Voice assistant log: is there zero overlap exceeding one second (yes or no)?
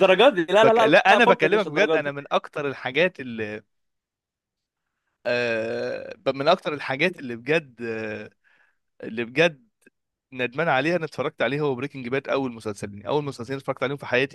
no